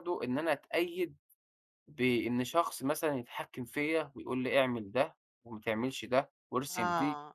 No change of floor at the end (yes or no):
no